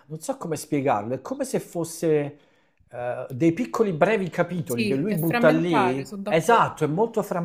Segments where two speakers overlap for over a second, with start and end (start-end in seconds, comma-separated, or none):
4.6-6.7